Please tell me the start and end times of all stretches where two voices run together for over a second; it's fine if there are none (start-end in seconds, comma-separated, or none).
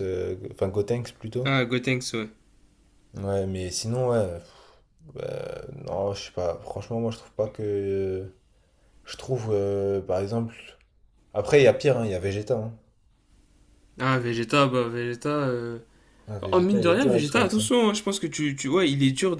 16.4-17.7